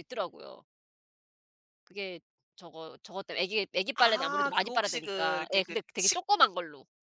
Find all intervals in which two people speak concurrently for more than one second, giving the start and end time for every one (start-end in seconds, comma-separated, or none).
4.0-6.2